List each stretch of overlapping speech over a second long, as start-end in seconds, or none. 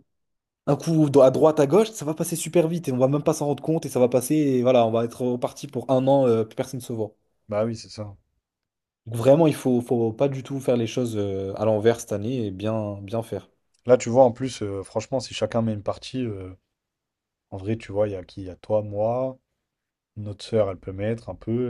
none